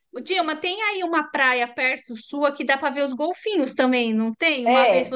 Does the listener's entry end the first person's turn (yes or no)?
yes